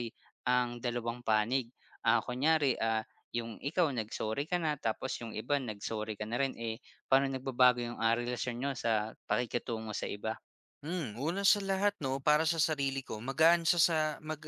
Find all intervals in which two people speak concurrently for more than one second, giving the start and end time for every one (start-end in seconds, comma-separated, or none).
none